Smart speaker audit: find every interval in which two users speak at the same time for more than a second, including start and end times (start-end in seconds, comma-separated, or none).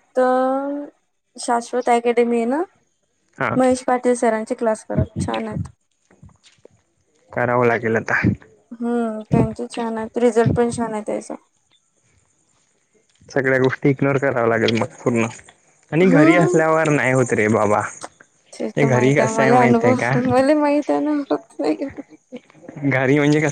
18.8-20.1